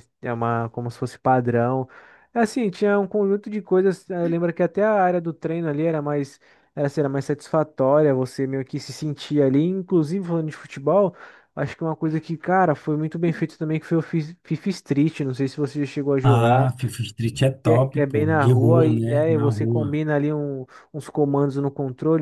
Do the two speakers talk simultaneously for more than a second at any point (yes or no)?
yes